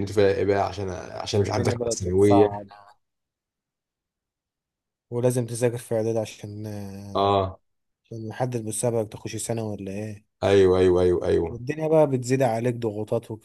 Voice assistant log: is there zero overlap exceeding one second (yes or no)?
no